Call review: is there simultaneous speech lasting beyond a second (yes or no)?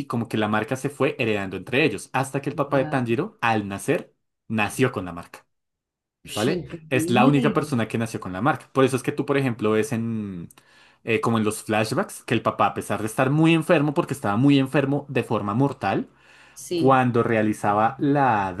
yes